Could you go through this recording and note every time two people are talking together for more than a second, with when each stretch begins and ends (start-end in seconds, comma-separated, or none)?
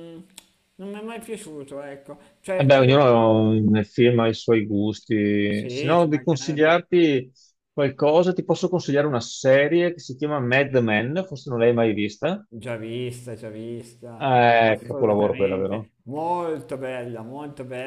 5.5-6.7, 14.2-15.9